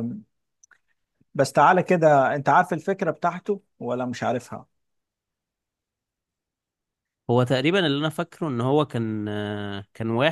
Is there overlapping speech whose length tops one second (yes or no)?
no